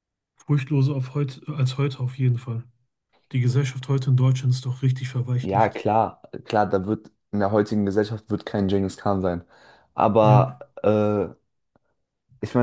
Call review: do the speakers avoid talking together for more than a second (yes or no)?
yes